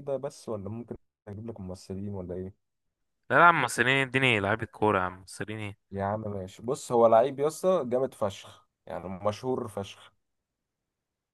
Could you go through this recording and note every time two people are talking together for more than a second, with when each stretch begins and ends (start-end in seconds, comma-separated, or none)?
none